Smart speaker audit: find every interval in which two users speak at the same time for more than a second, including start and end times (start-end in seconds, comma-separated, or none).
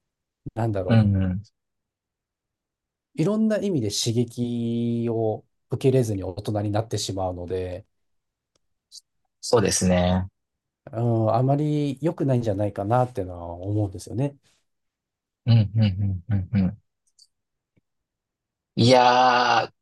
none